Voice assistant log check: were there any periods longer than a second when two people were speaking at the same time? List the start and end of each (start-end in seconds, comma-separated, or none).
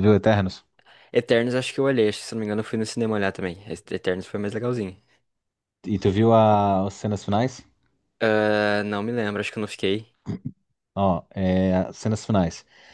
none